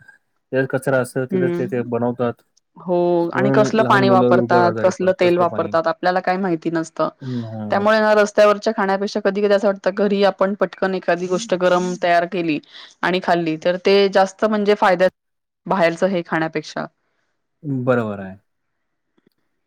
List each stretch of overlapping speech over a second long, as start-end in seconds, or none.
3.3-5.7